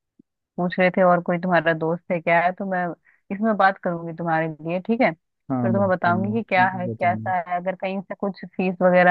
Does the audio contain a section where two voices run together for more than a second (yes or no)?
yes